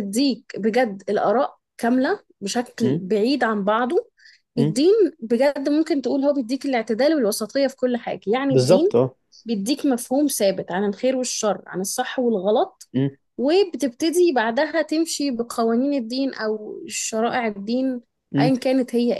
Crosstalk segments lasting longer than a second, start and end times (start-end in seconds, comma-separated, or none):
none